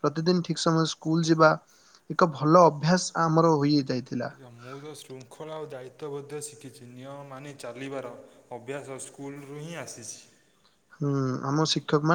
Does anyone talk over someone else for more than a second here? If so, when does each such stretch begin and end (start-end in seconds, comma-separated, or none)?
none